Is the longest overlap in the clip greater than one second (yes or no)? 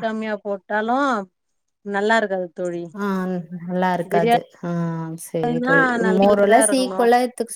yes